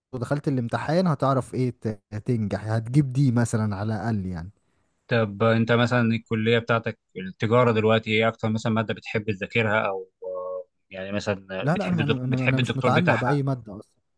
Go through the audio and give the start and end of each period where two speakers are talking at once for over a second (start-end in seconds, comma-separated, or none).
11.6-13.4